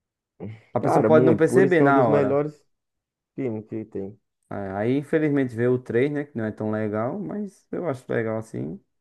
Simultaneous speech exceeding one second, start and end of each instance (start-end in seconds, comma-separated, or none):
0.8-2.4